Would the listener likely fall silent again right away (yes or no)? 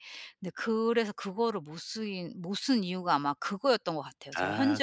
no